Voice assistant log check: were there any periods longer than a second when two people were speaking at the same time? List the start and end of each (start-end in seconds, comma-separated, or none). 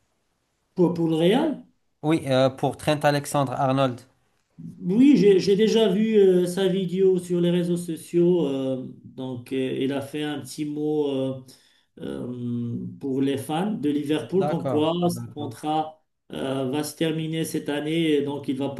14.2-15.6